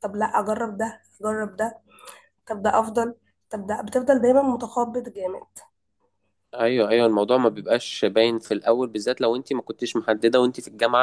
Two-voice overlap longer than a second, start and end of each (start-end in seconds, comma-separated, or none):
none